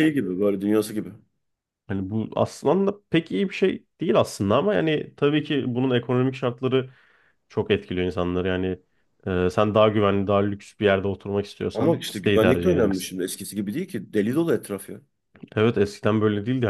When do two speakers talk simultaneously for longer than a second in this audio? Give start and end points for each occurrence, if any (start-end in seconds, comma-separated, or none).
11.7-13.2